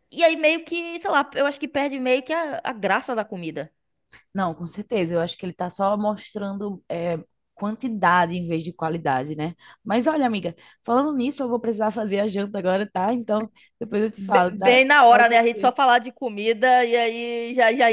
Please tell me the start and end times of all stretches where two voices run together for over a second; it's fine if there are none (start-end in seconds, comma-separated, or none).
14.2-15.7